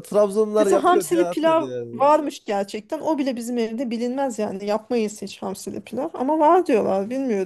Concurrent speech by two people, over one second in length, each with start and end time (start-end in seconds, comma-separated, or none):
0.6-2.1